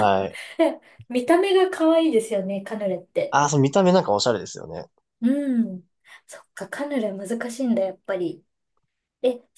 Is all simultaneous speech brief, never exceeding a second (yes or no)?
yes